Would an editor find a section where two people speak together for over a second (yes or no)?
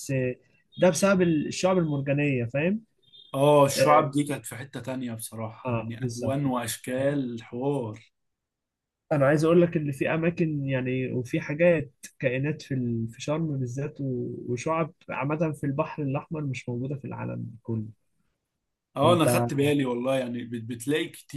yes